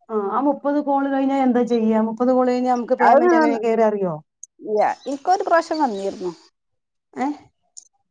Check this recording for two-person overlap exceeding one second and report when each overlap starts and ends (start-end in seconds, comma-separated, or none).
none